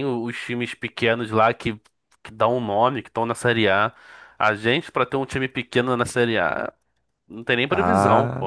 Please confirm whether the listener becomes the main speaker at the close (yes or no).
yes